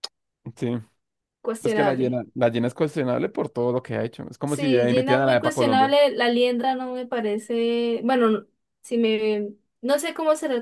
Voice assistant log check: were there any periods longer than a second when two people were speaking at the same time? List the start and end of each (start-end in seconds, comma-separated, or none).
4.5-5.9